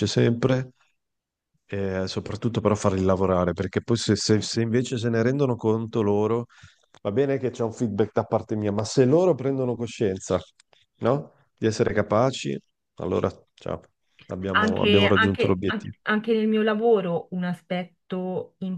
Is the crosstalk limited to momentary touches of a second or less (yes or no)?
no